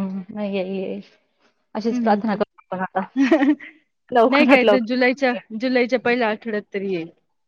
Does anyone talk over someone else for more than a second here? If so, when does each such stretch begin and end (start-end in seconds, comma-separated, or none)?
4.1-5.4